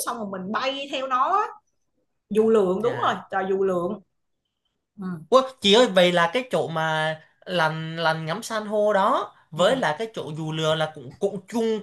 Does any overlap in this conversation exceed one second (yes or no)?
no